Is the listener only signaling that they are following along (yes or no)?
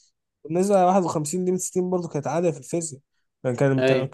yes